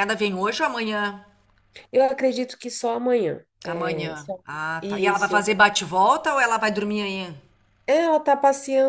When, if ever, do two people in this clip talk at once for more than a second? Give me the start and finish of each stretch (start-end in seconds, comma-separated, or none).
3.7-5.5